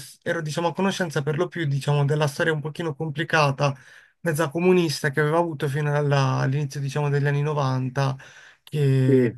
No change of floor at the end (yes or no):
yes